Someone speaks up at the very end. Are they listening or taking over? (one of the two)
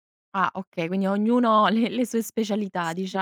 taking over